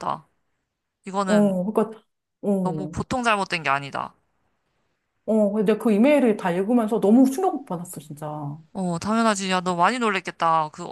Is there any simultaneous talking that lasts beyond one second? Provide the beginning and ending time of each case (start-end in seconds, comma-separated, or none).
none